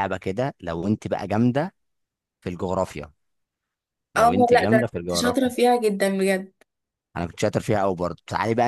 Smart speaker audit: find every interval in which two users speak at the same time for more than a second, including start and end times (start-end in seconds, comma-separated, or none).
4.2-5.5